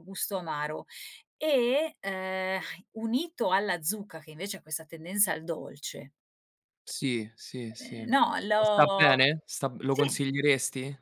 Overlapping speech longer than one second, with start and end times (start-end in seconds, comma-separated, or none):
7.8-9.0